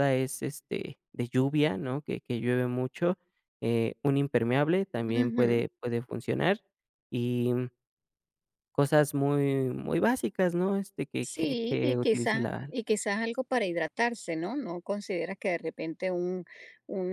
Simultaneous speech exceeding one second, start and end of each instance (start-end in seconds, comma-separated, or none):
11.2-12.7